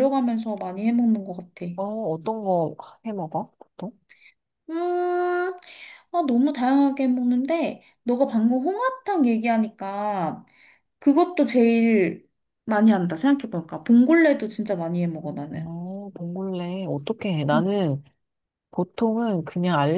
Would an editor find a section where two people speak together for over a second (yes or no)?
no